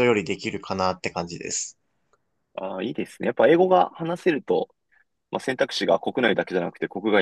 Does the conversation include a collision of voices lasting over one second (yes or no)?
no